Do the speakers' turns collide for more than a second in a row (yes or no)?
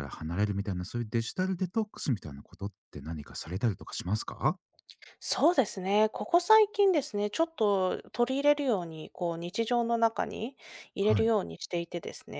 no